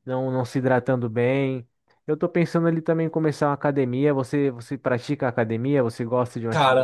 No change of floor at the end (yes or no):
no